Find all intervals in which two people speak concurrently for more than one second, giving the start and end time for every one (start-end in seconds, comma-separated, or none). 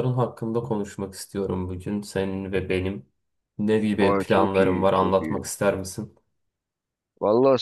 4.0-5.4